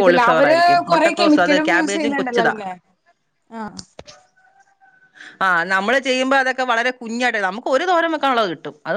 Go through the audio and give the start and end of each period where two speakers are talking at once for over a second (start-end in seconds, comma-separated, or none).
0.9-2.5